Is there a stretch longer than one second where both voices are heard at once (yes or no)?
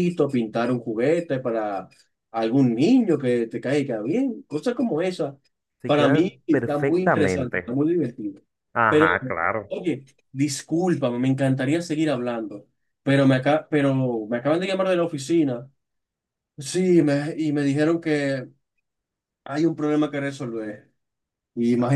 yes